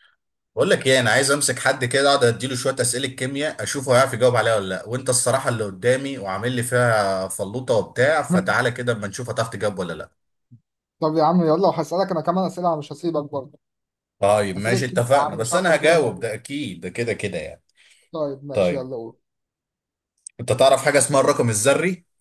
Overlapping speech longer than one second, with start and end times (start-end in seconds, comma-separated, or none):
14.6-16.3